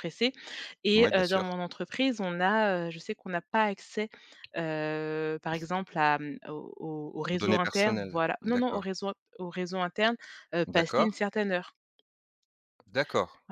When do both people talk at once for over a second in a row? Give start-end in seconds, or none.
7.3-8.9